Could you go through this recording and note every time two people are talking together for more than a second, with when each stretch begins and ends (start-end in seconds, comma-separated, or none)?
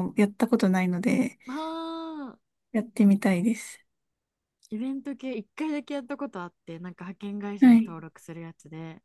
none